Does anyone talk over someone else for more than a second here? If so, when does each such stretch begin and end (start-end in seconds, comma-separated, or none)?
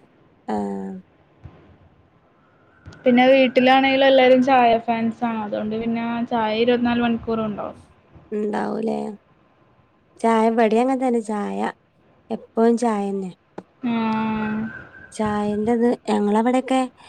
none